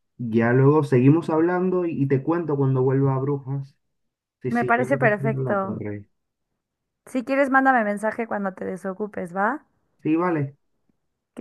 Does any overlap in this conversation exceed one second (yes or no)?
yes